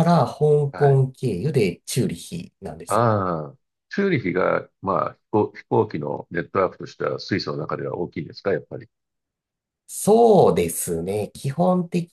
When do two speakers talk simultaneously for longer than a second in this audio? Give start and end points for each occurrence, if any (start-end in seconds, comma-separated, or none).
none